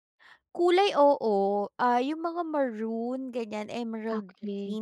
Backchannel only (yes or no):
no